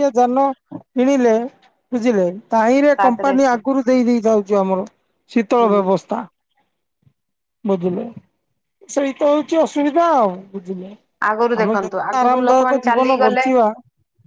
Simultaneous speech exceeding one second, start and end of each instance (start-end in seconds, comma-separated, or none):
11.6-13.4